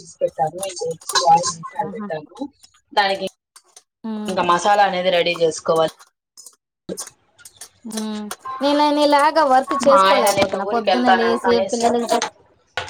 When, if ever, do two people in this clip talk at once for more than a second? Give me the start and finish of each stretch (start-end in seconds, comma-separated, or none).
9.9-11.9